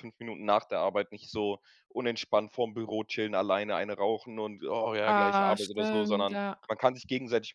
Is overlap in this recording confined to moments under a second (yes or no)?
no